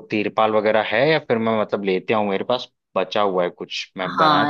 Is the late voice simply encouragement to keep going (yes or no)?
no